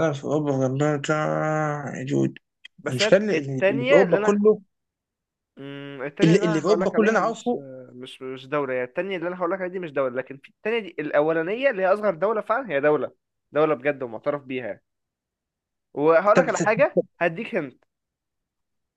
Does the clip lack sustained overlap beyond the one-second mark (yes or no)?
no